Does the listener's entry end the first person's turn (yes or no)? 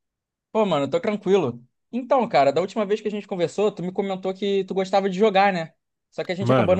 yes